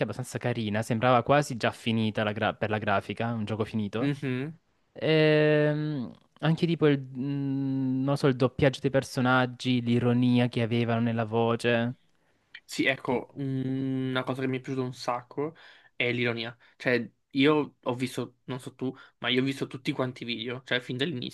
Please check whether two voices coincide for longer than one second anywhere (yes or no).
no